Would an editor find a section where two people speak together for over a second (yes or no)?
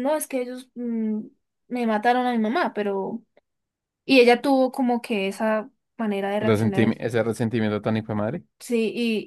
no